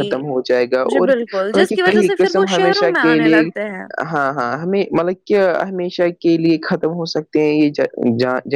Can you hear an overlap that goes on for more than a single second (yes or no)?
yes